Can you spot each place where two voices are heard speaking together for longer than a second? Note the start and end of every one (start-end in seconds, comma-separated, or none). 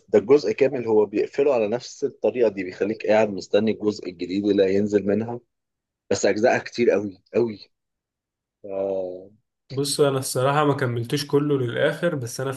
none